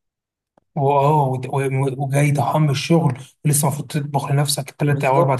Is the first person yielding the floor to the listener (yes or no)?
yes